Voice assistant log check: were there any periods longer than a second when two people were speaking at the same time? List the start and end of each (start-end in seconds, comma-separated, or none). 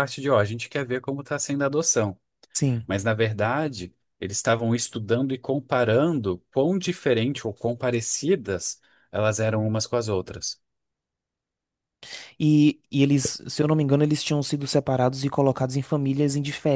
none